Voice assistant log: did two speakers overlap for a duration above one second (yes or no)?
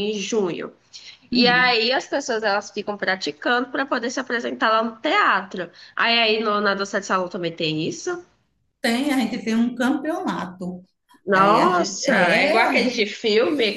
yes